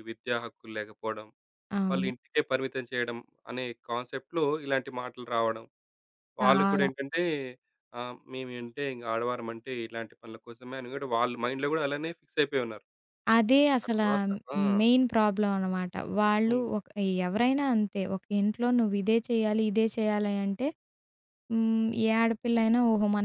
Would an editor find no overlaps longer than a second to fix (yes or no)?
yes